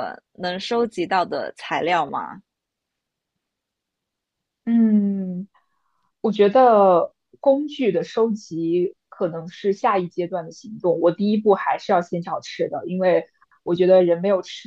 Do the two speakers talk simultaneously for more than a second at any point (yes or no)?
no